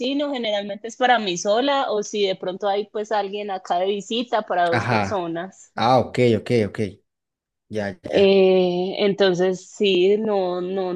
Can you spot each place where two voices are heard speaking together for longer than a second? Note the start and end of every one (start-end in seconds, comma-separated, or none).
none